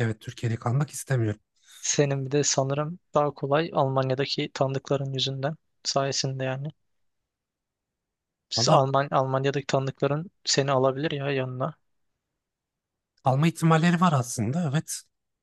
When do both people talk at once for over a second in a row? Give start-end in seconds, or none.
none